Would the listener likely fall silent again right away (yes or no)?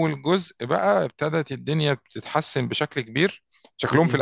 yes